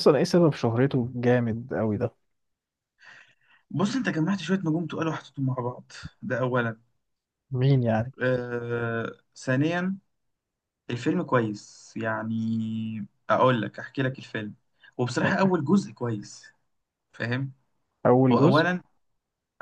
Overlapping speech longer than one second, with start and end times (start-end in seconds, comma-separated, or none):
none